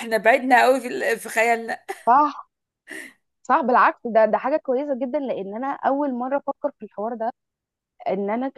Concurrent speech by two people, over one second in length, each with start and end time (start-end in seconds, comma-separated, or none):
none